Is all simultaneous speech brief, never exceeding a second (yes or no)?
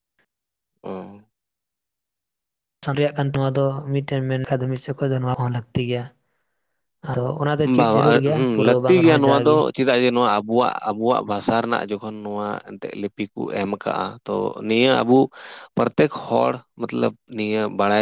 no